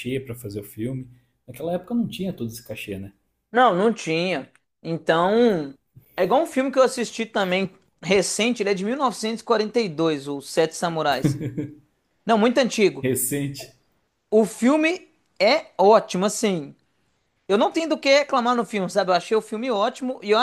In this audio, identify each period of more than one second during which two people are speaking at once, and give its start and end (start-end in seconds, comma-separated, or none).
none